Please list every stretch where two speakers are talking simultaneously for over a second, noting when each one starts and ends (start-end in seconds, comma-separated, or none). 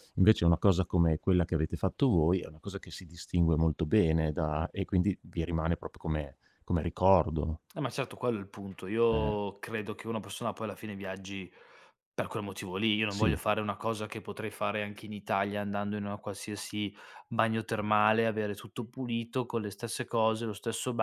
none